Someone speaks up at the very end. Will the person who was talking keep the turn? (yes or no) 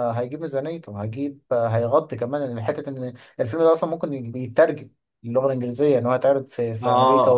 no